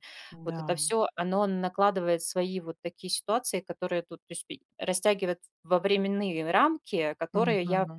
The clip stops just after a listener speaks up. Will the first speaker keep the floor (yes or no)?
yes